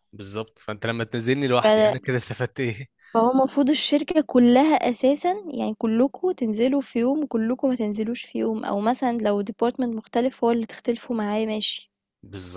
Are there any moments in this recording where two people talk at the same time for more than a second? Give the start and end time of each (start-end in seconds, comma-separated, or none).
none